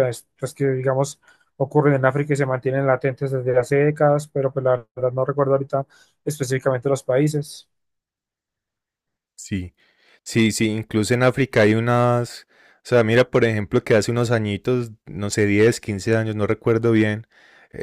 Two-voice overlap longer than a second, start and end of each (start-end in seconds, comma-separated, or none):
none